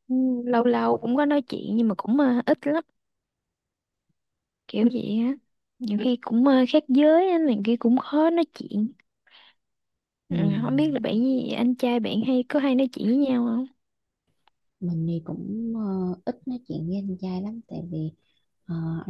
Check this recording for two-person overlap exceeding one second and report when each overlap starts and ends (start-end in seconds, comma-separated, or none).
none